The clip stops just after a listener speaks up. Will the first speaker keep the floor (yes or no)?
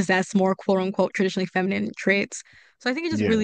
yes